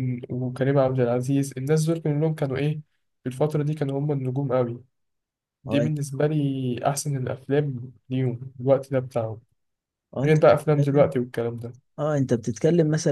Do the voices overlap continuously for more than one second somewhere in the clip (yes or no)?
no